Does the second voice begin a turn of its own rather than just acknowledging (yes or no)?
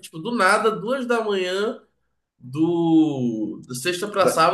no